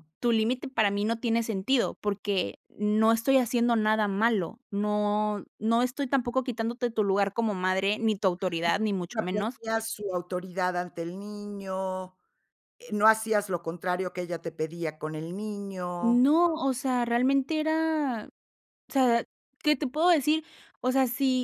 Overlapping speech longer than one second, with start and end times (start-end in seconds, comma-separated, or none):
none